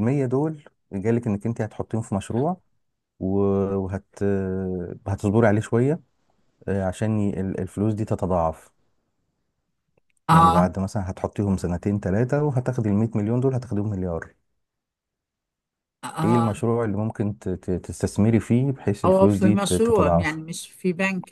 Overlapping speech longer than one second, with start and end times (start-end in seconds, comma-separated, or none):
19.1-20.4